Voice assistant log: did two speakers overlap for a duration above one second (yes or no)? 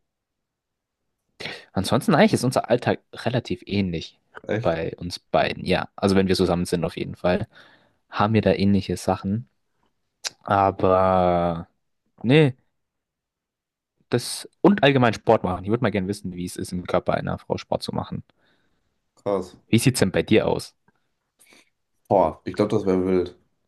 no